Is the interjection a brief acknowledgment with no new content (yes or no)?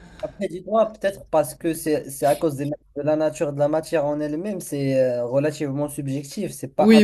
no